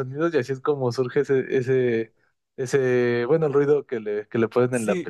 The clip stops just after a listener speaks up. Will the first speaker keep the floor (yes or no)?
no